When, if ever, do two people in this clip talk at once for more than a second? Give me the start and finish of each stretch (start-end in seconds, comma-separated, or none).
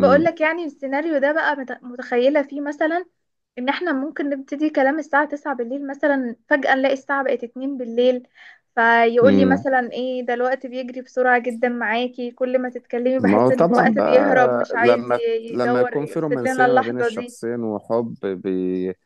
13.2-17.4